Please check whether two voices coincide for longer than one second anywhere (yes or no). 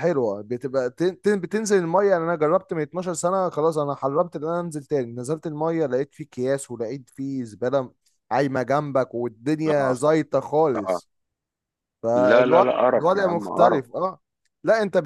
yes